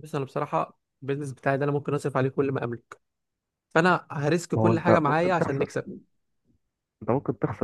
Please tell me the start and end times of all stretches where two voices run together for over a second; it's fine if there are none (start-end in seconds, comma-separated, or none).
4.5-5.8